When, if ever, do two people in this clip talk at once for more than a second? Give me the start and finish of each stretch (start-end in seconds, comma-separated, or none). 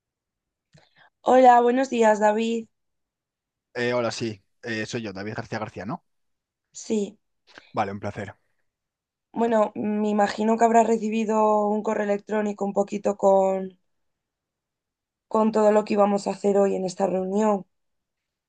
none